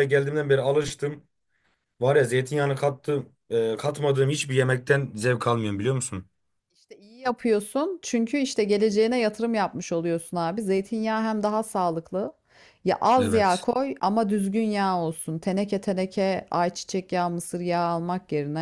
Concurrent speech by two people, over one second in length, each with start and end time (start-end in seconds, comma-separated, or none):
none